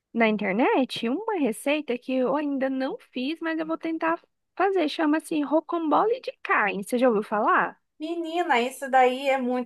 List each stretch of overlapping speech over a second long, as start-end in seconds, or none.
none